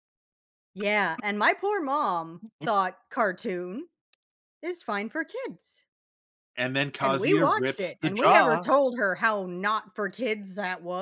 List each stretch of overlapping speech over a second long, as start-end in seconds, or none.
7.0-8.7